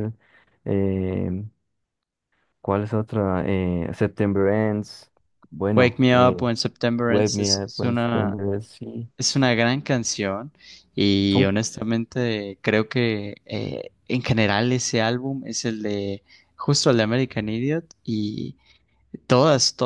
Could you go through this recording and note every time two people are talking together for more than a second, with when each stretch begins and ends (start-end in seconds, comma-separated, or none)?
7.1-8.4